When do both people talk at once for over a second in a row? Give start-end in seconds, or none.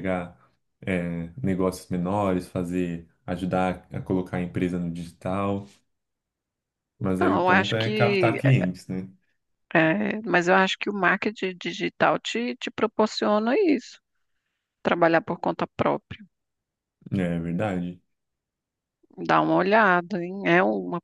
7.2-8.4